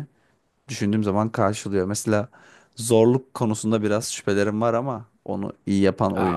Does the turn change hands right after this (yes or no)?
yes